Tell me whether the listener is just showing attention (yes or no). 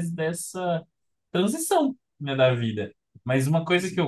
yes